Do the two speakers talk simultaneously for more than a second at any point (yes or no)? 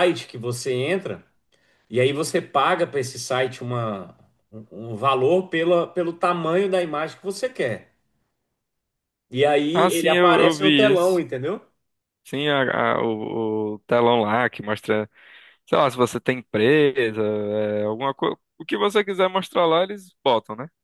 yes